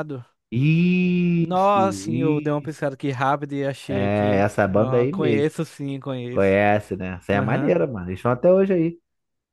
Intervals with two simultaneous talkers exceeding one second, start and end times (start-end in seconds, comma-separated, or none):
1.4-2.8, 3.9-5.5